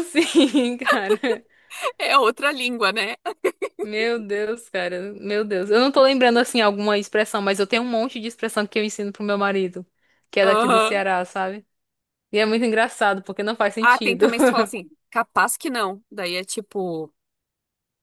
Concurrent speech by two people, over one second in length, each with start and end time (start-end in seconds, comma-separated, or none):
none